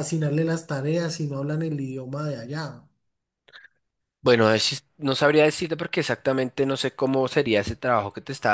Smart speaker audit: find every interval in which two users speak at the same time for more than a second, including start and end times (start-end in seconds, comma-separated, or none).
none